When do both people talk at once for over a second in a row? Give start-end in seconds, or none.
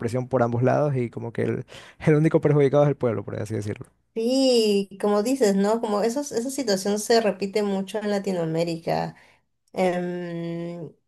none